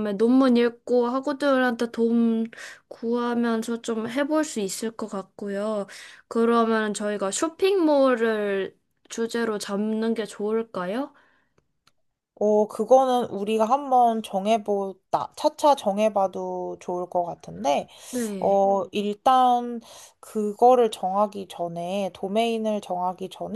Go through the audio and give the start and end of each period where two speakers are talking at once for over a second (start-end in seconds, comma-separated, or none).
none